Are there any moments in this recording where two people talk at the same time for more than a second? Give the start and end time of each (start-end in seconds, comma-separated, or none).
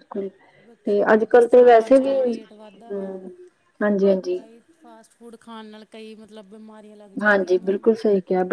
0.8-2.2